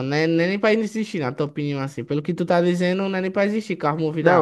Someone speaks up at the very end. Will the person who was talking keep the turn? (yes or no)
no